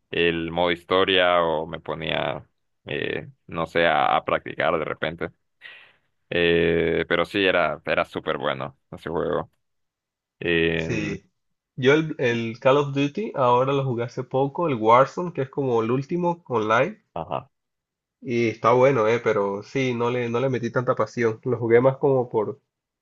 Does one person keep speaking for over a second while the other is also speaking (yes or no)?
no